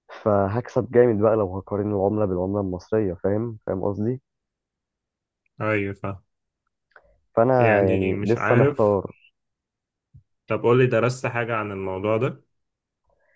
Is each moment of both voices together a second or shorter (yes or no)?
no